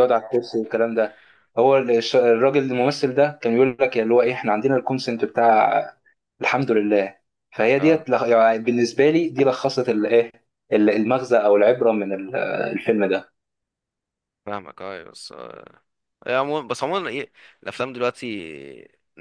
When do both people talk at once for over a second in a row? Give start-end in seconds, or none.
none